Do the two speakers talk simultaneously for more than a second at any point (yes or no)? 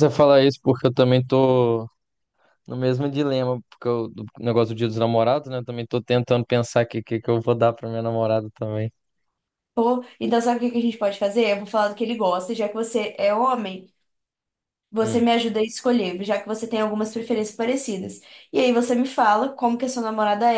no